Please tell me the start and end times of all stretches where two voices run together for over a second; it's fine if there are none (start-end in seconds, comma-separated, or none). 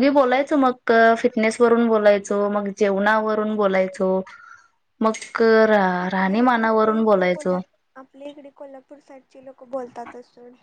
6.0-7.6